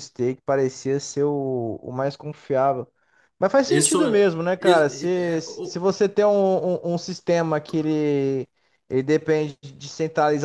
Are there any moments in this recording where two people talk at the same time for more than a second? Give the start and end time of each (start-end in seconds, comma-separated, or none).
3.7-5.8